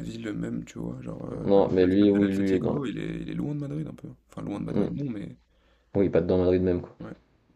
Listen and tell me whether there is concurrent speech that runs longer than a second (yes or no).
yes